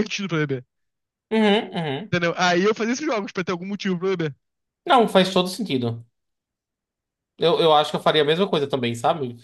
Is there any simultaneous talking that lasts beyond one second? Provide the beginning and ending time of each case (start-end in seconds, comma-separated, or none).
none